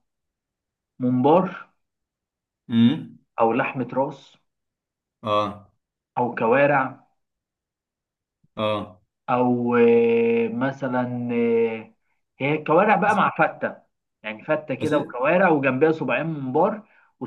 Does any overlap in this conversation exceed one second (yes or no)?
no